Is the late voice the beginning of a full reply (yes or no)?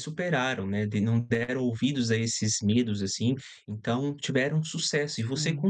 no